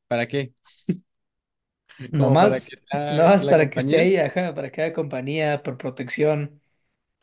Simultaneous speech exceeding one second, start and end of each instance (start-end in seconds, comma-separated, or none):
2.1-4.1